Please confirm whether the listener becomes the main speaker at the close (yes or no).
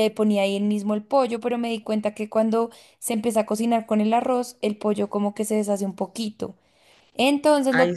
no